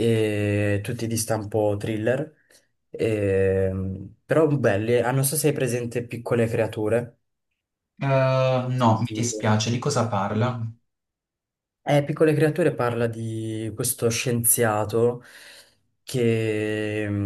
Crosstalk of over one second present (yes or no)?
no